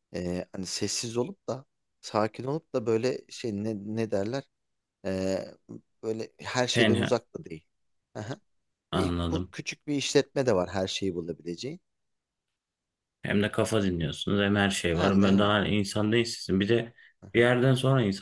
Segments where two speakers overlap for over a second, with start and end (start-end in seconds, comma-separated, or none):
none